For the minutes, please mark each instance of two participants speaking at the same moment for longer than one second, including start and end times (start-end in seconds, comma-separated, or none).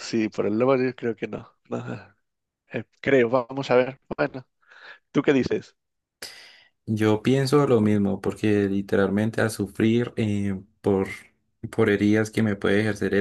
none